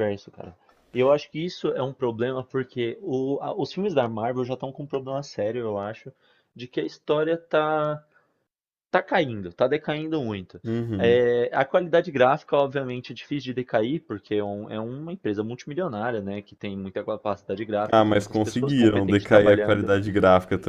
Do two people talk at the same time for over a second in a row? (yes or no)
yes